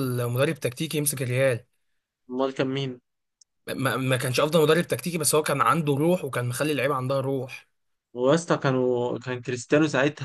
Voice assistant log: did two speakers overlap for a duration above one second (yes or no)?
no